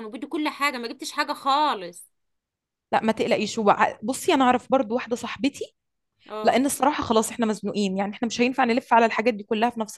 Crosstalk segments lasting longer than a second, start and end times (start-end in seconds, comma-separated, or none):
none